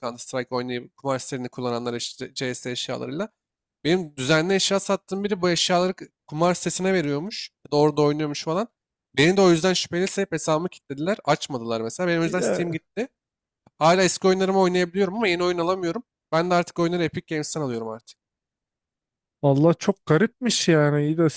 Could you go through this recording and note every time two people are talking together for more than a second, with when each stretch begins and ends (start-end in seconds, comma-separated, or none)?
none